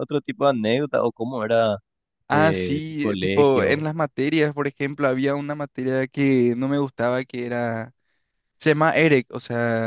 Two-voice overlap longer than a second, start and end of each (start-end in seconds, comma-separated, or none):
2.3-3.9